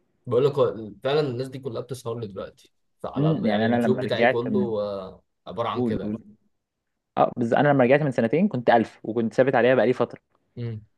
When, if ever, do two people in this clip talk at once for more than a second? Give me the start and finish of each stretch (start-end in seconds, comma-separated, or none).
3.1-4.7